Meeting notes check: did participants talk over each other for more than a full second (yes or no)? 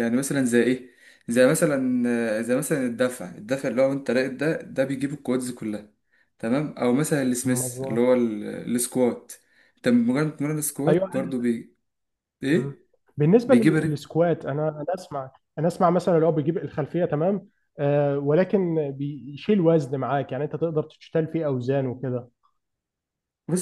no